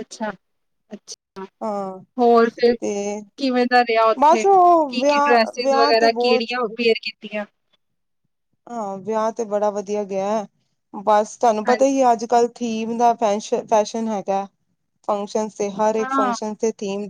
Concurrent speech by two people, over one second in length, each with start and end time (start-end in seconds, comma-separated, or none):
4.2-6.4